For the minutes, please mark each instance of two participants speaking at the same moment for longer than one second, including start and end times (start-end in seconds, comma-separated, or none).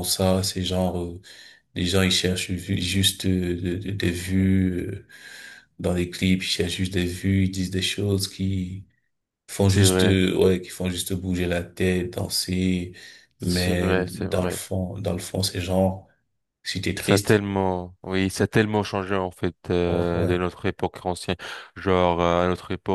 13.4-14.6